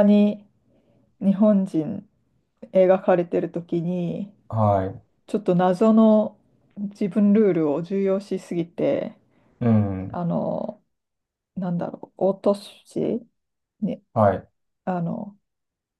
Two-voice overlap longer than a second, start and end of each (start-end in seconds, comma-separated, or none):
none